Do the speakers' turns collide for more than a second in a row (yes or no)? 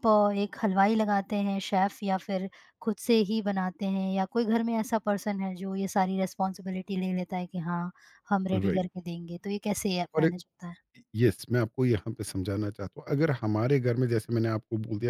no